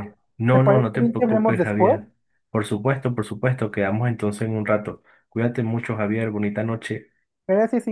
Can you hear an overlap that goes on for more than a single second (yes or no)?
yes